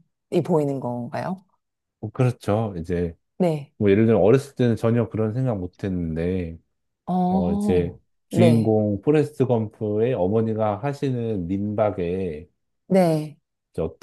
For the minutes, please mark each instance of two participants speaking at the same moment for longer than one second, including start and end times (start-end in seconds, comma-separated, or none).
7.3-8.7